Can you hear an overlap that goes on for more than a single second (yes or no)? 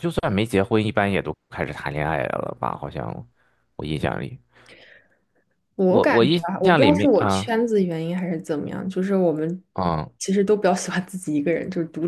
yes